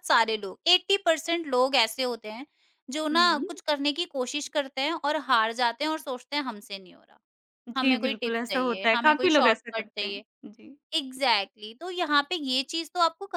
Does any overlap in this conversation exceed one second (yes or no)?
yes